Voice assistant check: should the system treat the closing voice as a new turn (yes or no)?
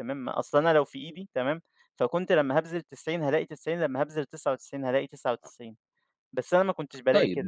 yes